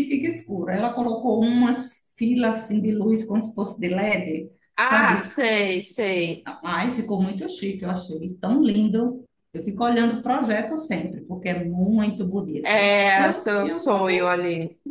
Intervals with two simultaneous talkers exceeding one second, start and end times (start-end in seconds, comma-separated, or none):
12.6-14.3